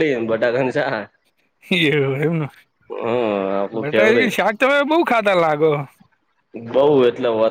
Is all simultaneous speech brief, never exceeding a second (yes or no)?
yes